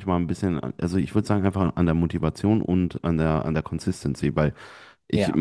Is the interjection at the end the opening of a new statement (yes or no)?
no